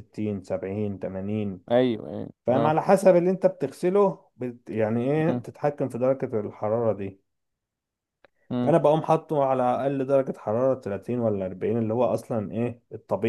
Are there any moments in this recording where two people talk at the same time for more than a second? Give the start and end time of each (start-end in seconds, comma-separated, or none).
none